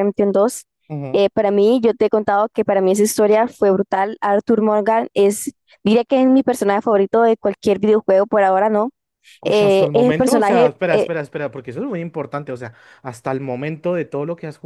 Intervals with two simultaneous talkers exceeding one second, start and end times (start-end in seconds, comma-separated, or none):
9.4-11.1